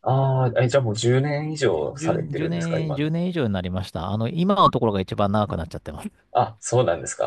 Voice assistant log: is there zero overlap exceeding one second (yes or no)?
no